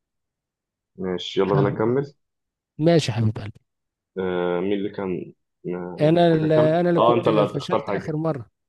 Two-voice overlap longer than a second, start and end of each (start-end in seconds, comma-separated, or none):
6.0-8.2